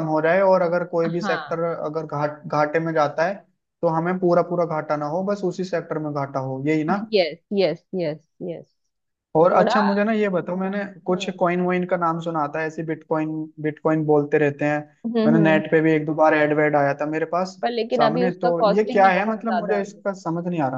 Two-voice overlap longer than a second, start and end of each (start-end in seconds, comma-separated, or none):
18.0-20.0